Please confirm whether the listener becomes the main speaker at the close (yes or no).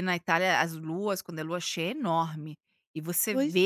no